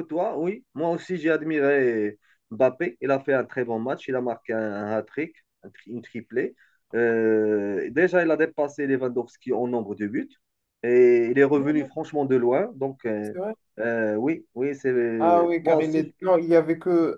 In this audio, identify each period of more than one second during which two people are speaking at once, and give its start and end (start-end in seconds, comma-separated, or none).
none